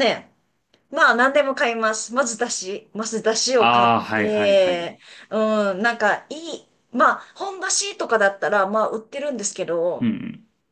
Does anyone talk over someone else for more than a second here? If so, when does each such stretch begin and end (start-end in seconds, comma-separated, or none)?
3.6-5.0